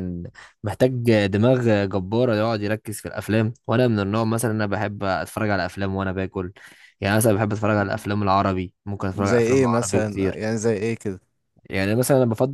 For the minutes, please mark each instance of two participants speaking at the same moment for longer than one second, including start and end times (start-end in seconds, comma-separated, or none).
9.1-10.4